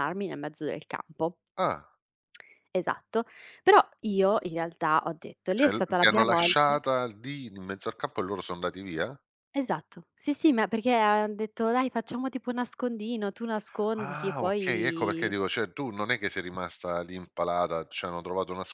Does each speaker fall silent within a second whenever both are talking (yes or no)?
no